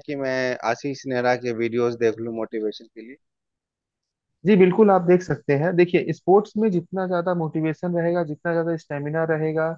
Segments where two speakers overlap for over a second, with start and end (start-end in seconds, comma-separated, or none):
none